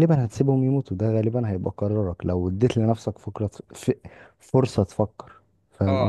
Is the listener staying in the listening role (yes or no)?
no